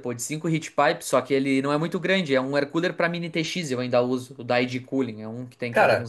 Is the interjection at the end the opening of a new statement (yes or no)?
yes